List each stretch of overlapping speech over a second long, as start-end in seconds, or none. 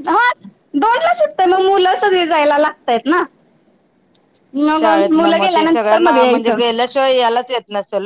4.7-6.6